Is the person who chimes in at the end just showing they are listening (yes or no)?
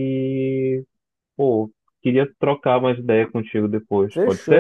no